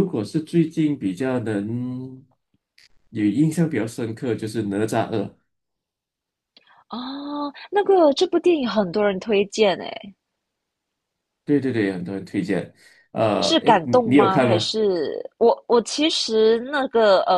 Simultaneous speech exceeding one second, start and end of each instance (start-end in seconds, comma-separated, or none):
13.4-14.7